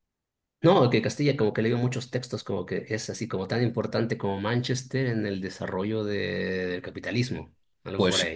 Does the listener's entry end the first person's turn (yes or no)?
yes